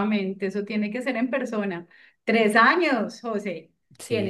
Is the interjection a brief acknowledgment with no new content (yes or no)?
yes